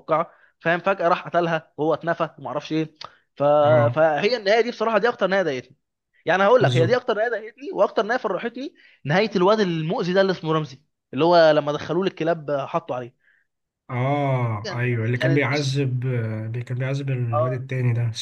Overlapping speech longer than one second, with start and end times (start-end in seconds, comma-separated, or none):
14.5-15.8